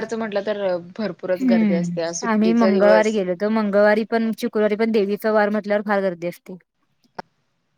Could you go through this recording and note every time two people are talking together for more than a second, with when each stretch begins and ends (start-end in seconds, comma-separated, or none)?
1.4-3.2